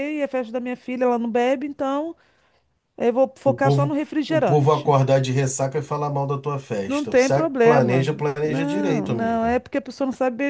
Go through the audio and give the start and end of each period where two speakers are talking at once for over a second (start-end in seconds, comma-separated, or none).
3.5-4.9, 6.8-9.6